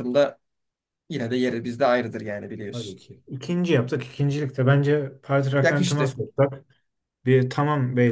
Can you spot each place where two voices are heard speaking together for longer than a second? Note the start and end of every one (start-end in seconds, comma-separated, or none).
none